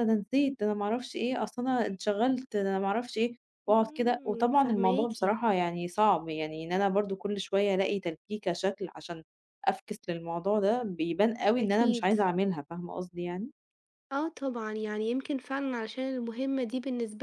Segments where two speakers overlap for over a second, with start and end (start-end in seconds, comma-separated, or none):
3.7-5.1